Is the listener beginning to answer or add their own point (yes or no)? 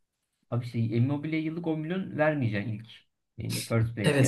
yes